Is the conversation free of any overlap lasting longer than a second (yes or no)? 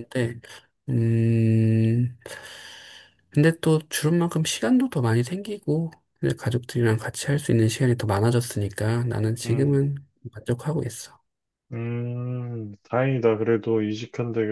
yes